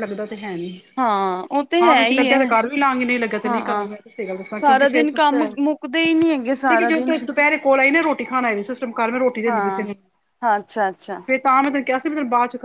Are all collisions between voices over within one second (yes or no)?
yes